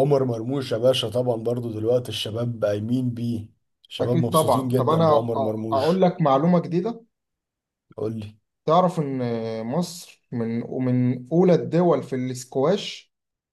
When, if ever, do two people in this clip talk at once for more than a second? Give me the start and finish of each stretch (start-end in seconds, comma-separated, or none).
4.0-6.0